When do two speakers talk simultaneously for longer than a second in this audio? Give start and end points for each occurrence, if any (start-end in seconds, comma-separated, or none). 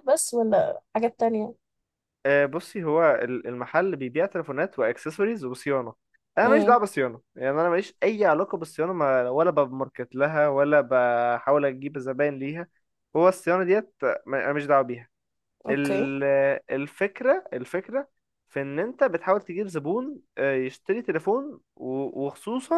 none